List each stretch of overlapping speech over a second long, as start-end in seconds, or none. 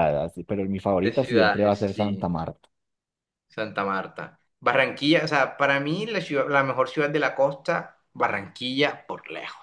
1.0-2.2